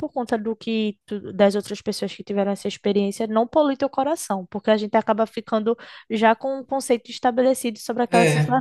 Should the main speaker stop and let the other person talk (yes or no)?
no